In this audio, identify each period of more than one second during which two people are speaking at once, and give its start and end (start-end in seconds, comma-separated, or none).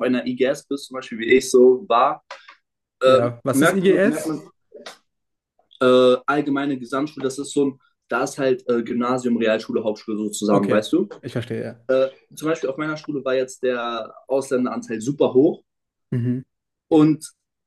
3.0-4.4